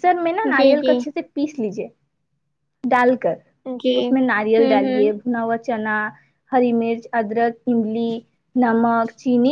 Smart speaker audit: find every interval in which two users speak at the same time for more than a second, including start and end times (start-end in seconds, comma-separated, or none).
4.0-5.2